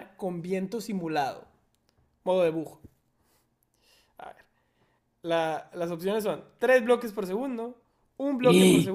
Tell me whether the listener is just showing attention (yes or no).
yes